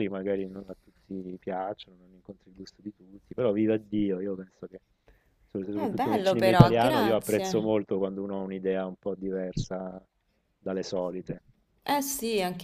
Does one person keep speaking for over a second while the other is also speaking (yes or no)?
yes